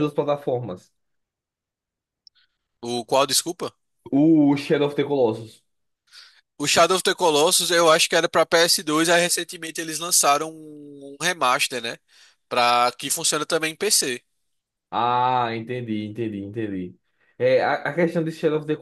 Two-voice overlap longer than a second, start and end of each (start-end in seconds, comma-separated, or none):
none